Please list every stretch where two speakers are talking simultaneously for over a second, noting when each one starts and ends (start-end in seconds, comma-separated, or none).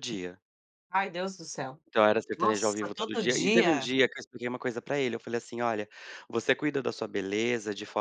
2.4-3.9